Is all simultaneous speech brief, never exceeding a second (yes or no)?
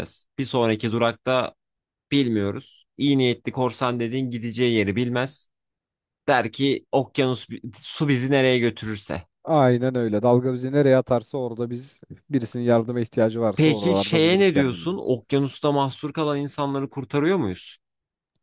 no